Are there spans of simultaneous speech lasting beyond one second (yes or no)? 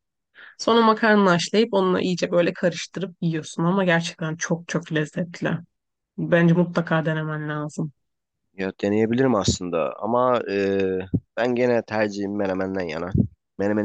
no